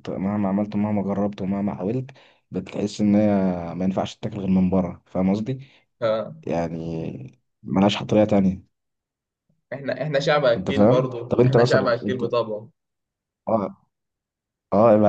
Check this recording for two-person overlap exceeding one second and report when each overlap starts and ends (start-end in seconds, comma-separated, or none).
10.6-12.2